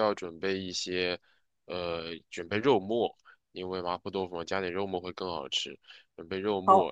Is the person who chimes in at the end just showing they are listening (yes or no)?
yes